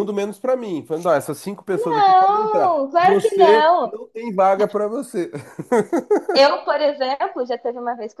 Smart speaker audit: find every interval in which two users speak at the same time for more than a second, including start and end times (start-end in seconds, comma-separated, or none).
1.7-4.0